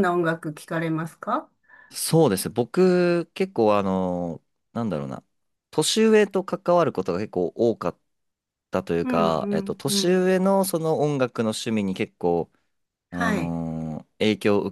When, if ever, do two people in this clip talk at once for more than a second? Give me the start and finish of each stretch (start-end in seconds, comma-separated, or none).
9.0-10.3